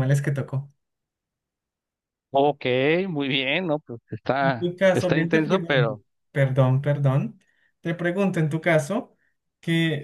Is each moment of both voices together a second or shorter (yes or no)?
no